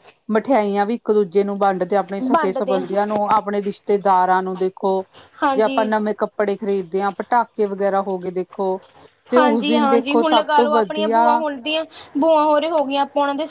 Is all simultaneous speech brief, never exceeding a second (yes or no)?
no